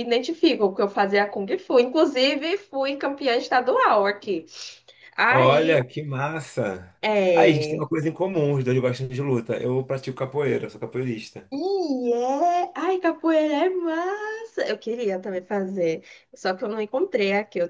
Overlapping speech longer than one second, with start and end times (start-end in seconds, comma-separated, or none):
none